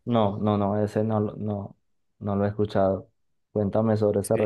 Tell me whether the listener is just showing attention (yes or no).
no